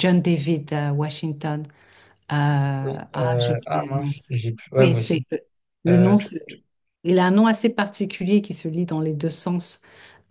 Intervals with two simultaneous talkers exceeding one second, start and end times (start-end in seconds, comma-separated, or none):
2.8-4.1